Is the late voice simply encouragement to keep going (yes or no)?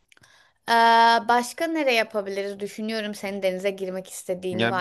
no